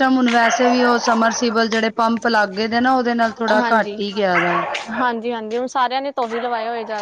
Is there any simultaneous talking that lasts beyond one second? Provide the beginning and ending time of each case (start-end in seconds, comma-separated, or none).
none